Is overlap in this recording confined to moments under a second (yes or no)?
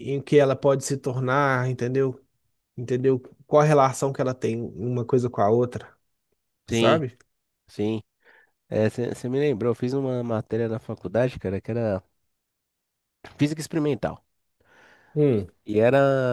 yes